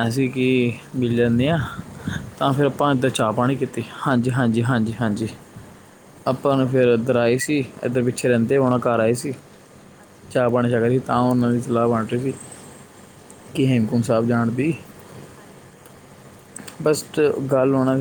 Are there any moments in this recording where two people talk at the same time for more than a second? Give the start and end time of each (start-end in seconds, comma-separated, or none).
2.4-4.2